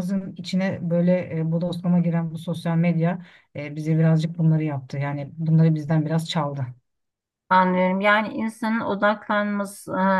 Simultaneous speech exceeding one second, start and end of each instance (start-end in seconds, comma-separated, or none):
none